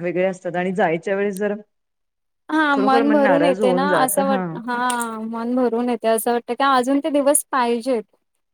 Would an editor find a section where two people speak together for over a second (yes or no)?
yes